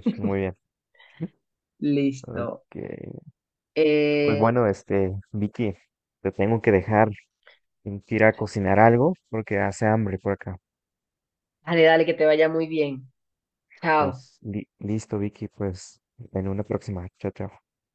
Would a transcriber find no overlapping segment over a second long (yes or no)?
yes